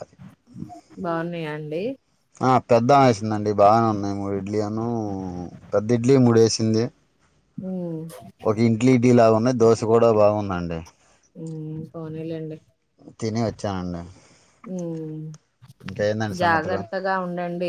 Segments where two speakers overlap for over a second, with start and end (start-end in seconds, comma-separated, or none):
none